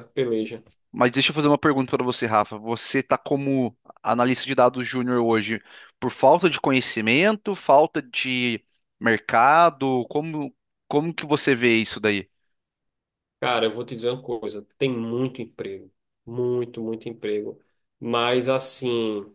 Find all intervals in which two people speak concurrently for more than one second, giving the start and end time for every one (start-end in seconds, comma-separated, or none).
none